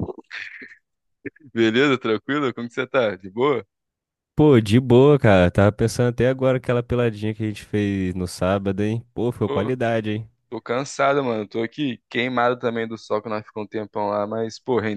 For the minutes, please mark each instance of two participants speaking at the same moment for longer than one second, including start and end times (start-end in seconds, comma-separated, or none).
none